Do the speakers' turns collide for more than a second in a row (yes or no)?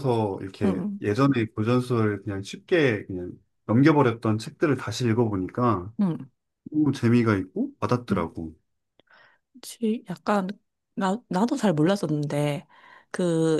no